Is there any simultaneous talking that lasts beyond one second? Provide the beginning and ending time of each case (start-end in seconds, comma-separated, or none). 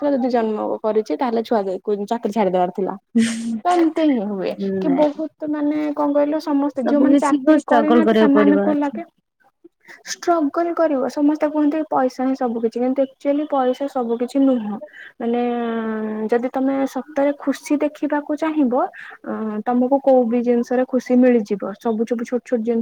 6.8-8.9